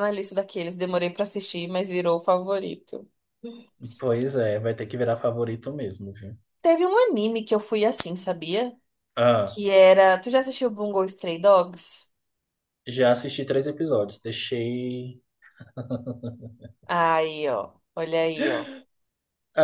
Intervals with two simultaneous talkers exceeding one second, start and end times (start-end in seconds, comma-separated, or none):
none